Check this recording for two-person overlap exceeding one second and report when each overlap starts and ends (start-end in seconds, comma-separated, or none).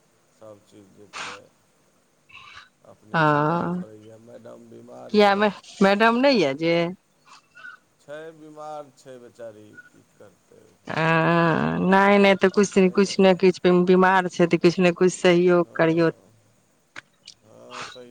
none